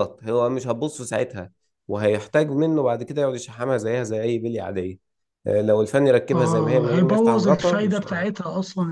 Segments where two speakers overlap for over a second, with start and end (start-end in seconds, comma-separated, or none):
6.3-8.2